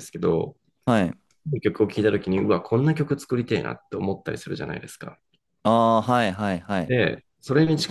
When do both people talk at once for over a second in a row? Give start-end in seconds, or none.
none